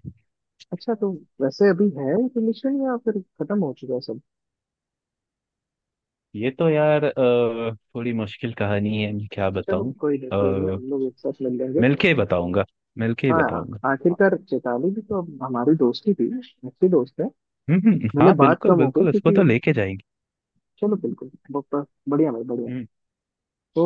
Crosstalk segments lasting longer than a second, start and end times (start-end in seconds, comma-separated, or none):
18.2-19.4